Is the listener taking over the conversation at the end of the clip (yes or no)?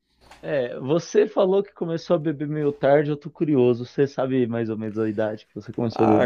yes